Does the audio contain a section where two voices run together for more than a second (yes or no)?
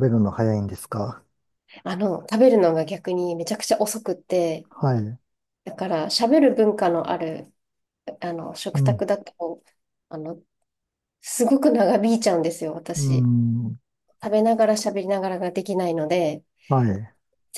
no